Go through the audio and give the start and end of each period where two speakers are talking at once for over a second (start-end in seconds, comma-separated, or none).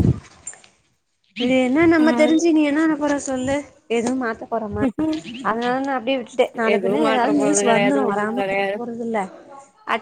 6.7-8.7